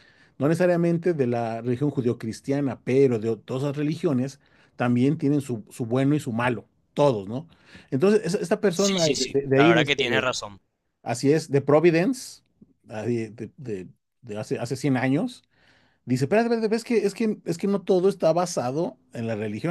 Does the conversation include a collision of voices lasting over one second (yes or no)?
yes